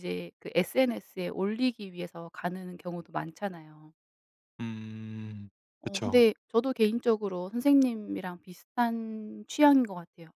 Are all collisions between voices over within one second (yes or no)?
yes